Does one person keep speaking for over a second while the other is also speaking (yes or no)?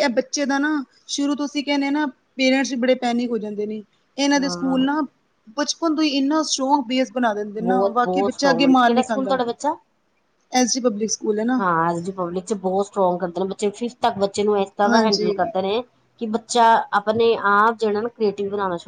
yes